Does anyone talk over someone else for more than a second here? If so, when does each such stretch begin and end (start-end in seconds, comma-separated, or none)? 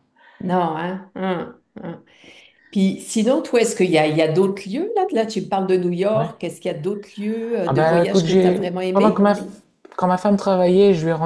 7.7-9.3